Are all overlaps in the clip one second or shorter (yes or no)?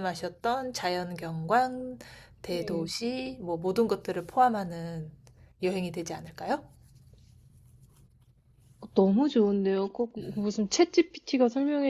yes